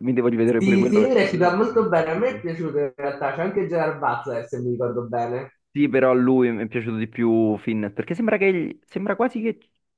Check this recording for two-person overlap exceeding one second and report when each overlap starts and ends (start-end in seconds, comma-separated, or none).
0.6-2.4